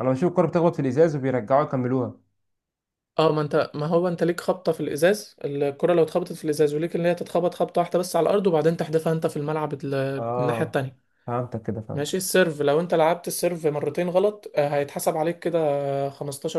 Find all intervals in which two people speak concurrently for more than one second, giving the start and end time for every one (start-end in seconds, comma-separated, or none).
none